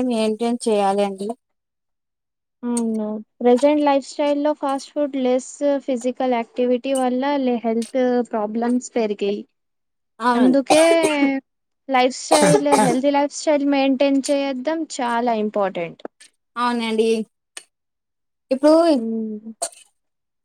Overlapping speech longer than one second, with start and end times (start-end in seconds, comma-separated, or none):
none